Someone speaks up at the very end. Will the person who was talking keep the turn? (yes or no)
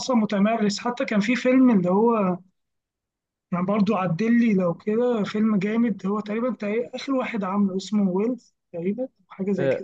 no